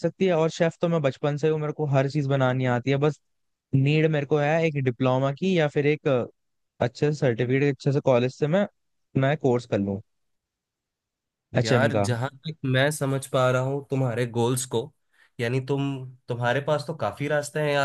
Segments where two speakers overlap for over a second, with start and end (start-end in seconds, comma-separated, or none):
none